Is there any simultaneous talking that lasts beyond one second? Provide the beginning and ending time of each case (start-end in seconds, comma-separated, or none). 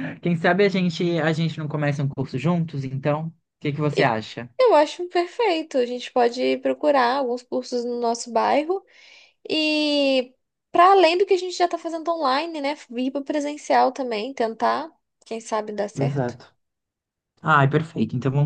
none